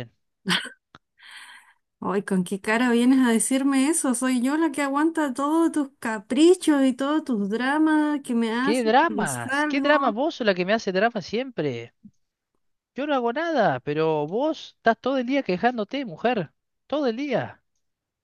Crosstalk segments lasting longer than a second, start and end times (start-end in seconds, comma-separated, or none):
8.6-10.1